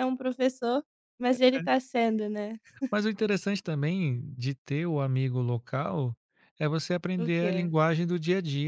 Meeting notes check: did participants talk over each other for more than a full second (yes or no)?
no